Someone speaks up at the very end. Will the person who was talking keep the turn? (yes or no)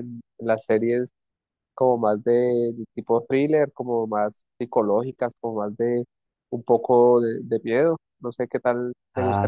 no